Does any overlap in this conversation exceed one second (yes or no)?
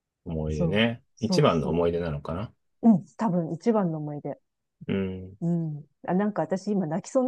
yes